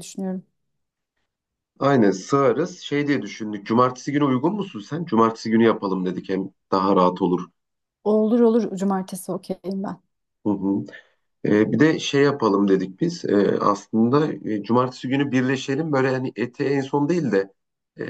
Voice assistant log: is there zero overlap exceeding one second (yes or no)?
yes